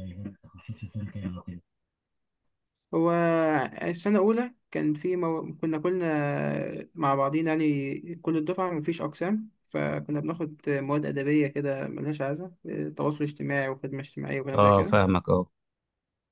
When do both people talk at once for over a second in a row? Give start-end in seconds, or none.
none